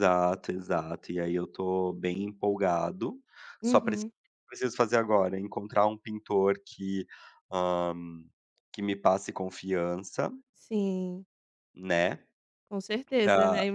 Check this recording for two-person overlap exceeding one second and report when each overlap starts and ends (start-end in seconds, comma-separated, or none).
none